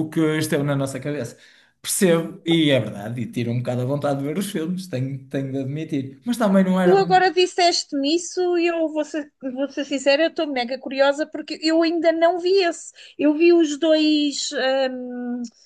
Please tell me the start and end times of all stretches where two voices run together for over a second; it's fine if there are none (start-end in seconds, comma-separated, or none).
none